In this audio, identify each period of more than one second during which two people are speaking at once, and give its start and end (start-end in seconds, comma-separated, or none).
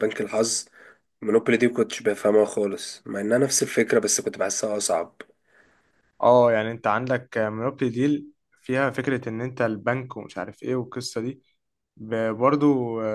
none